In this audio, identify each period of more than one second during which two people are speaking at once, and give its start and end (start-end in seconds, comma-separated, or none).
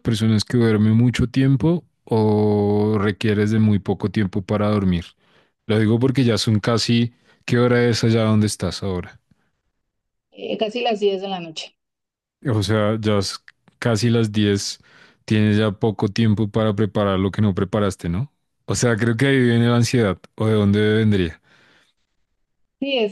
none